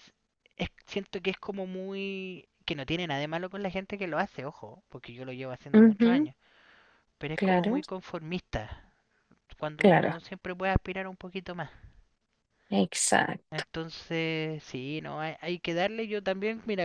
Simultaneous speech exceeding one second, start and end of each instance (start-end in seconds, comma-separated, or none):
none